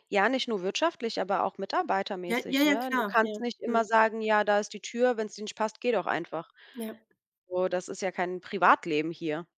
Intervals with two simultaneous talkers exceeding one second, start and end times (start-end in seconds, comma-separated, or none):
2.3-3.9